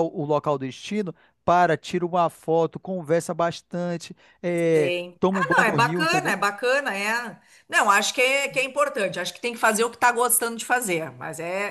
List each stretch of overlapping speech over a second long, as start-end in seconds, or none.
4.8-6.3